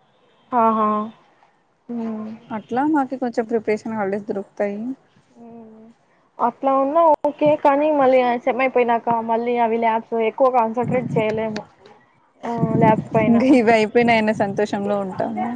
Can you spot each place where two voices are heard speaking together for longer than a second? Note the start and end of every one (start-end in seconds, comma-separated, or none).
none